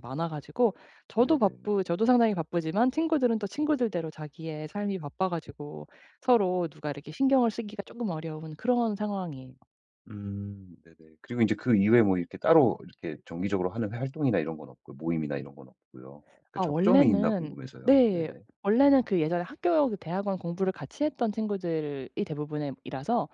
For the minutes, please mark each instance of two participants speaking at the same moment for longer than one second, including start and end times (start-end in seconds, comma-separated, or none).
16.5-18.4